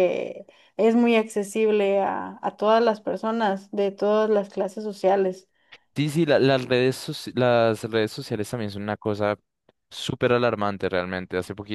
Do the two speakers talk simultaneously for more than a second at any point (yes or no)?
no